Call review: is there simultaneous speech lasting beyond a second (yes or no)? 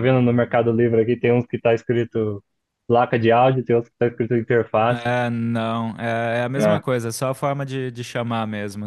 no